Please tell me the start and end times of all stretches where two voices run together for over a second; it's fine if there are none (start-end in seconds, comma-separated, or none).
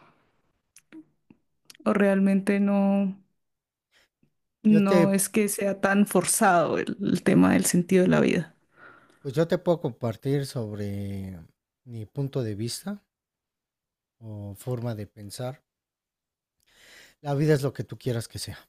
none